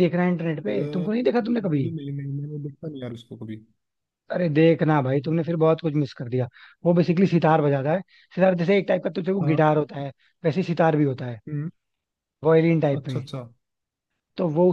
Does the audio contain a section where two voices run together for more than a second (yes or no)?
yes